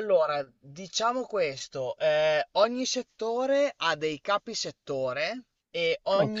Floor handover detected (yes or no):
no